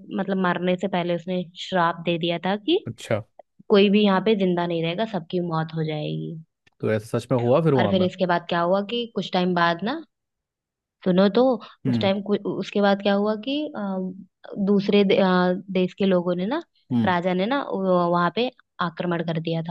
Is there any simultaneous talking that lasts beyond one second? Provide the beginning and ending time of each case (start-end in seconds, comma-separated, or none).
none